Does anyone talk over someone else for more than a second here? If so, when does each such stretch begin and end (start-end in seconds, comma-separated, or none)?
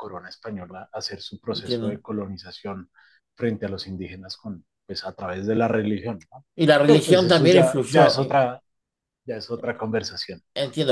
6.8-8.4